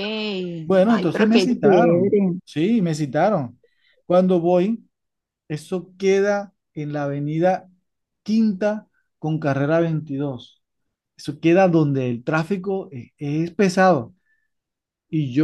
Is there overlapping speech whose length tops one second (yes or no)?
yes